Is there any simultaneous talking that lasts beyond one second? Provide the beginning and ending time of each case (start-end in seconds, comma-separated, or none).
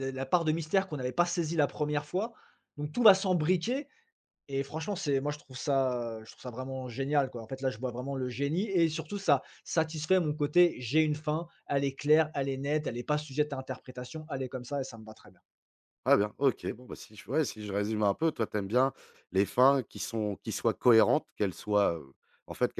none